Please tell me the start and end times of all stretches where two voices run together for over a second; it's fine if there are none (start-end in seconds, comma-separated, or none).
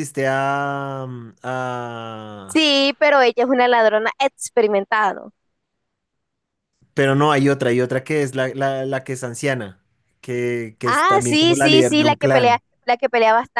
10.8-12.6